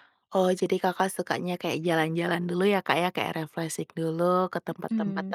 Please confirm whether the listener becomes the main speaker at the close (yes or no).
no